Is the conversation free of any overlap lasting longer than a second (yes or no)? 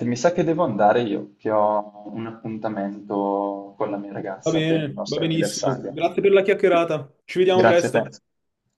no